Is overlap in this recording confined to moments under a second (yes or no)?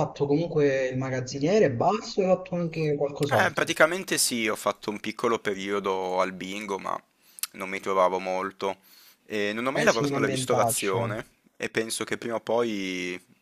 no